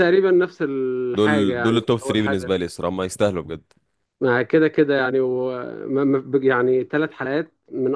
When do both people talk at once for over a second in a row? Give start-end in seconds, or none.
1.1-2.5